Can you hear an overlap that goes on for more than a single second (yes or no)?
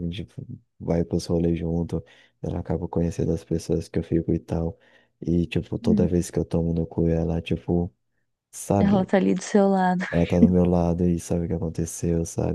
no